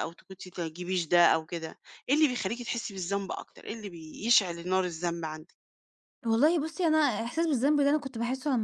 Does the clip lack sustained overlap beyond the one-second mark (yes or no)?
yes